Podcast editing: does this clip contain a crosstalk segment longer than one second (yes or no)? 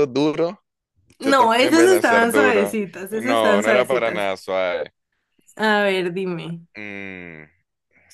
yes